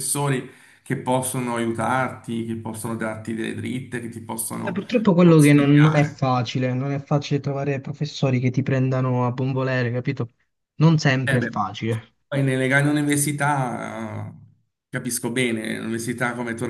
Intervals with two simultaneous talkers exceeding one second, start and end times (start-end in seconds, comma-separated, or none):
4.6-6.3